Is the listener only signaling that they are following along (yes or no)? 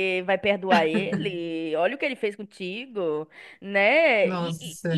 yes